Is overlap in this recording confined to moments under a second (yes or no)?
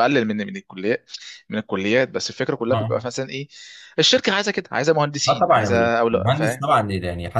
no